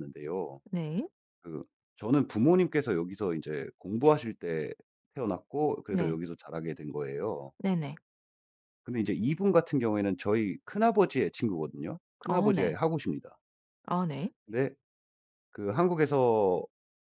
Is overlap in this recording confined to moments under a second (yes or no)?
yes